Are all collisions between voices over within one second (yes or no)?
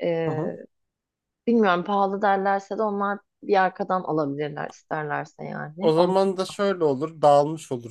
yes